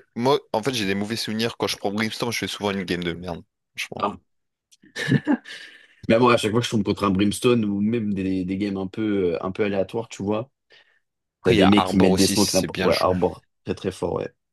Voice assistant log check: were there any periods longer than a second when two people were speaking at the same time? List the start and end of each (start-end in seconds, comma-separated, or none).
11.4-13.1